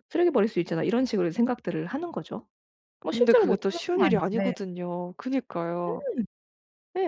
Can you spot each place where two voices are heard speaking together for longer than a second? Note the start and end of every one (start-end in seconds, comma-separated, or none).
3.0-4.5